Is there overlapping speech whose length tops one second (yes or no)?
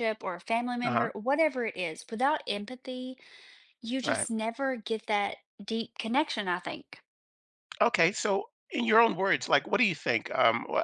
no